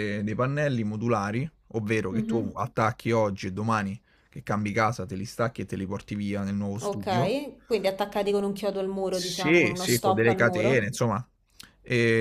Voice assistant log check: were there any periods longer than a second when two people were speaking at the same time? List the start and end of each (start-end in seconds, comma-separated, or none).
9.1-10.9